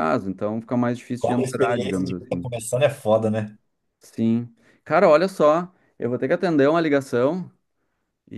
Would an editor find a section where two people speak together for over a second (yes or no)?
yes